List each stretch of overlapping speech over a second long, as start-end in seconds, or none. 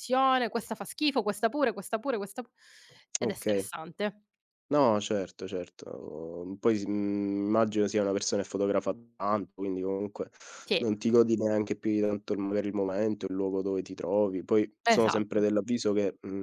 none